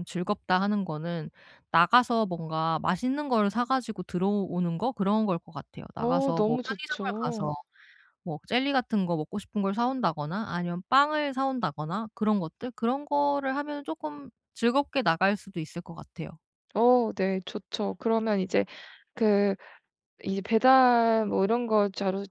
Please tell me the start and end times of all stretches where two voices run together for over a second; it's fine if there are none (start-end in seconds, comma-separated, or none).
6.0-7.5